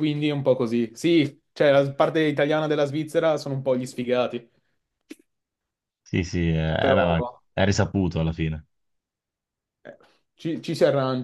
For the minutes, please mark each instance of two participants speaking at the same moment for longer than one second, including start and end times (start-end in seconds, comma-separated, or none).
none